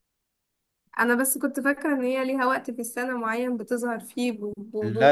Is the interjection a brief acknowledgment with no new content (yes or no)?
no